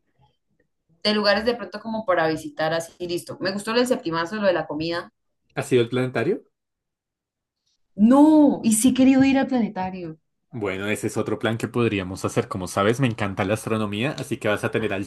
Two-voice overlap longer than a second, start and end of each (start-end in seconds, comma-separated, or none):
none